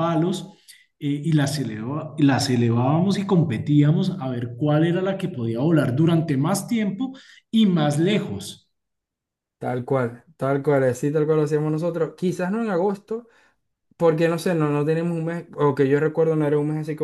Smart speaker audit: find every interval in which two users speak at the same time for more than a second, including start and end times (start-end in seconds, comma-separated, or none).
none